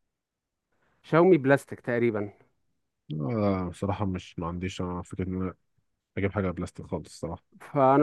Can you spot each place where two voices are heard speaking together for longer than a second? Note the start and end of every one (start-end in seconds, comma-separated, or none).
none